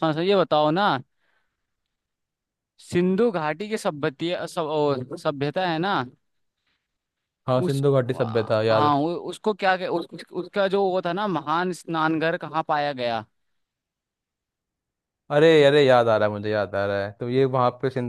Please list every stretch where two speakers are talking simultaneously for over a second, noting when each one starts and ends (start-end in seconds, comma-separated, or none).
none